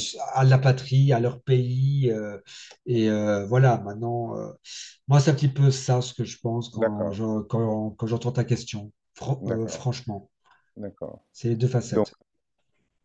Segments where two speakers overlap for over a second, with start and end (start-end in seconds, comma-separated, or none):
none